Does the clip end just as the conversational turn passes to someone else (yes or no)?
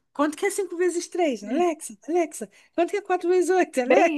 yes